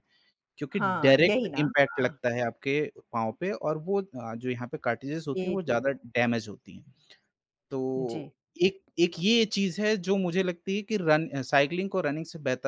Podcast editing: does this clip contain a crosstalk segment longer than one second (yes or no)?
yes